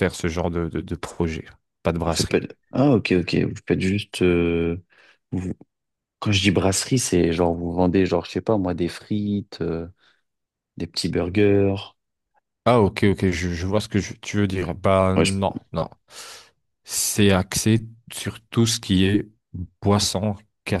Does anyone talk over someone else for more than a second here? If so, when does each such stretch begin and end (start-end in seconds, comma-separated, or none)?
none